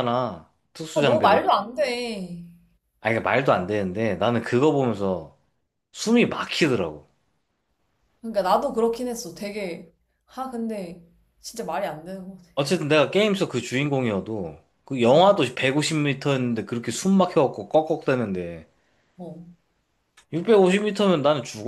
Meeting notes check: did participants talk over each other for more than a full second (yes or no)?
no